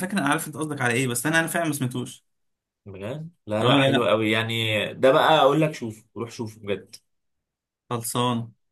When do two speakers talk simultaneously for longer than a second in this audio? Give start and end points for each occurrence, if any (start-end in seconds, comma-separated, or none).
none